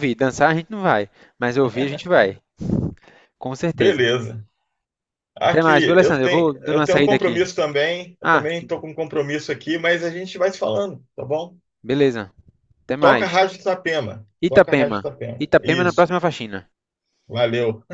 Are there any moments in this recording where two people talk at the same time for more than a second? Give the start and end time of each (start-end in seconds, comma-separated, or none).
5.4-7.3, 14.4-16.1